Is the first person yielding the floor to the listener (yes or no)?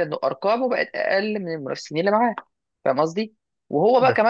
no